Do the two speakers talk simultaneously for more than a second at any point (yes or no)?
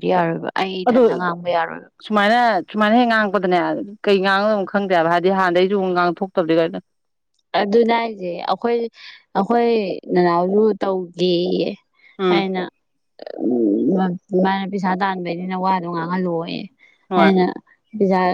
no